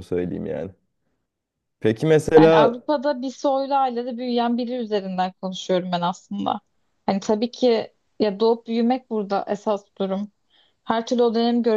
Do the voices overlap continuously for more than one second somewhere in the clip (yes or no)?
no